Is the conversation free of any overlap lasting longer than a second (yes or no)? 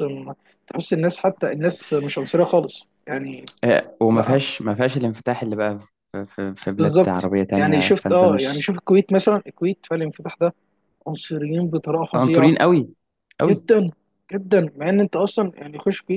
no